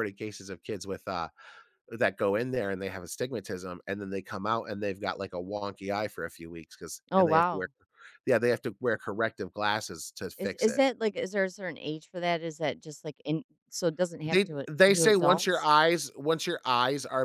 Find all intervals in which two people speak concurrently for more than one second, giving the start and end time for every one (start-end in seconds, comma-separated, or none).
14.2-15.7